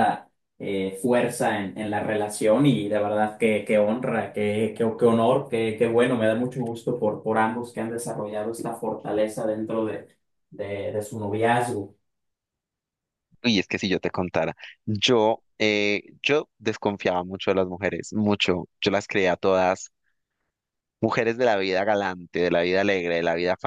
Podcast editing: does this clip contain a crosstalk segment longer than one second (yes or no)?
no